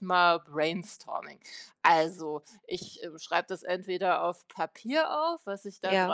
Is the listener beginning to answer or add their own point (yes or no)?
no